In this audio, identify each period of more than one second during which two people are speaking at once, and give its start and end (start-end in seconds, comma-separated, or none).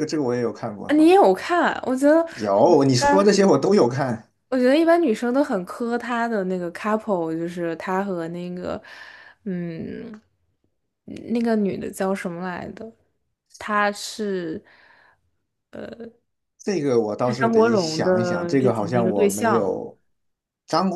17.2-19.8